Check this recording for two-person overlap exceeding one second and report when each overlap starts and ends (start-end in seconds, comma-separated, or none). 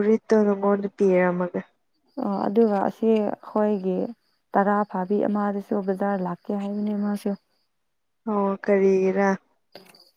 none